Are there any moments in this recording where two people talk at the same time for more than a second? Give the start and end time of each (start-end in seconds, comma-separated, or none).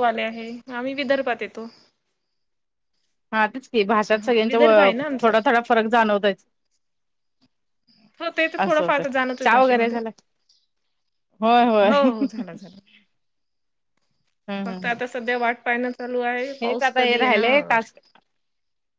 16.6-17.8